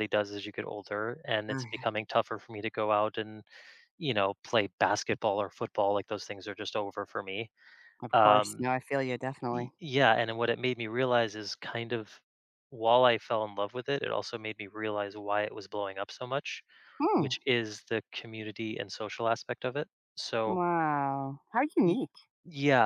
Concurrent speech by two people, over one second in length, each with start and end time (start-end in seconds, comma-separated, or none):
none